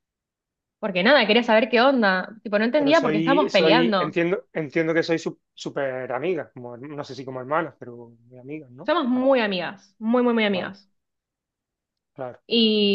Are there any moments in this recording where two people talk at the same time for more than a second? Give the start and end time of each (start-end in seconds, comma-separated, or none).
2.8-4.2